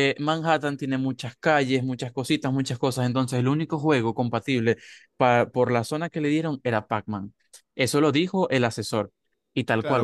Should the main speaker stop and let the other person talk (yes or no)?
yes